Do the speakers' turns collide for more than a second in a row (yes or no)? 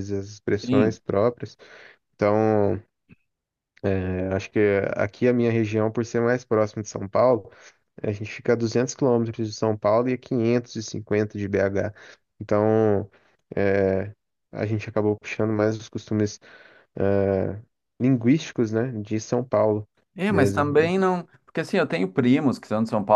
no